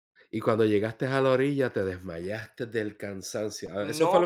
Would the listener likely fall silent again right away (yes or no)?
no